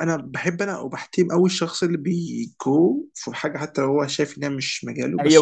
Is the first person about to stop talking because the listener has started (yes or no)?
yes